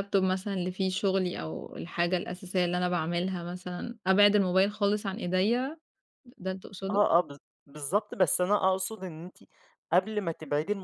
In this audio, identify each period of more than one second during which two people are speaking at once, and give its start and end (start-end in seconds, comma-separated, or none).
none